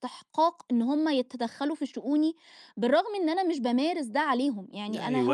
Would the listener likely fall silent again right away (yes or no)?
no